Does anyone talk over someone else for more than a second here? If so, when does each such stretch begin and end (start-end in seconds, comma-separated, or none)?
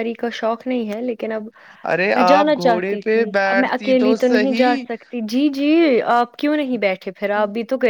2.1-4.8